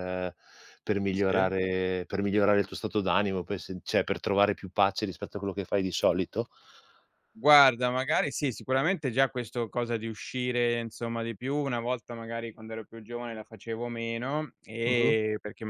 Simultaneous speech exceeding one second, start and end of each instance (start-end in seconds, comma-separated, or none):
none